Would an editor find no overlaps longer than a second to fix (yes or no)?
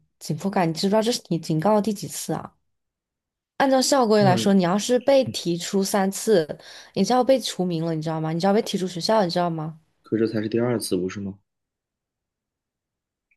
yes